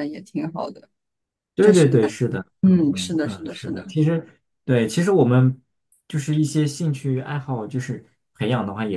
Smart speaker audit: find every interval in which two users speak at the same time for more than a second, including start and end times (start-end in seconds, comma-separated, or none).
2.6-4.0